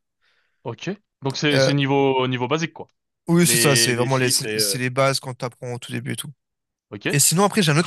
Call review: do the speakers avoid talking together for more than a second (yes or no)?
no